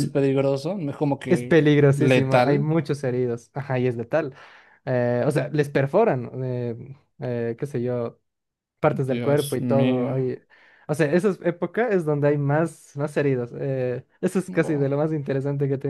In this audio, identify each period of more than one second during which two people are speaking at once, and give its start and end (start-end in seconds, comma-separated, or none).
1.3-2.7, 8.9-10.2